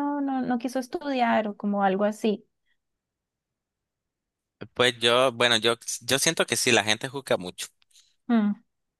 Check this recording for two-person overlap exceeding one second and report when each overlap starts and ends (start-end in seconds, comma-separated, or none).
none